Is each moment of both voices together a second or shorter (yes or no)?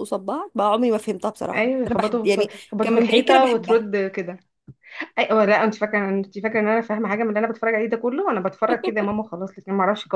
no